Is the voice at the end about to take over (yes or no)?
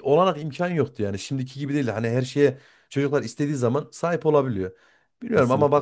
no